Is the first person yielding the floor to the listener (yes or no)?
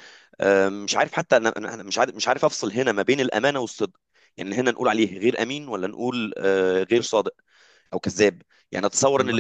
no